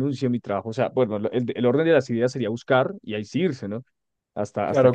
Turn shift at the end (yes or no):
yes